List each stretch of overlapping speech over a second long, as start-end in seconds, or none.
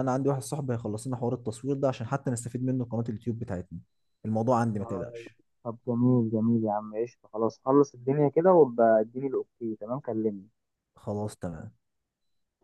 none